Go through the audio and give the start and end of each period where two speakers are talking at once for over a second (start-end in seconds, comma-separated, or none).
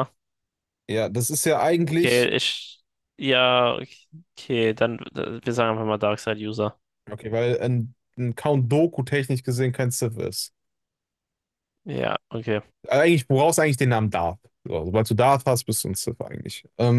none